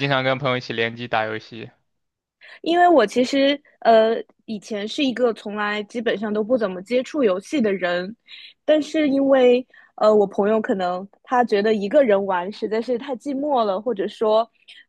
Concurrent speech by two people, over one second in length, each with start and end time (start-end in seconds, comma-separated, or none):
none